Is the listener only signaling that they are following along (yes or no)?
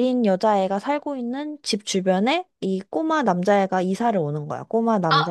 no